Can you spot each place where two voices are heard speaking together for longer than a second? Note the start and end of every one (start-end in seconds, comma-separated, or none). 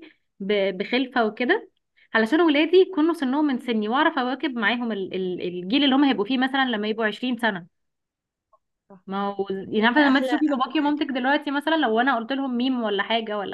9.6-11.0